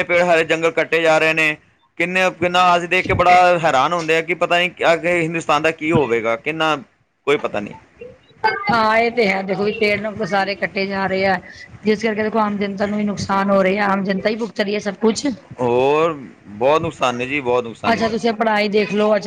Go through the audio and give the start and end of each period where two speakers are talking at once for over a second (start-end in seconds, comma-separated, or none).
none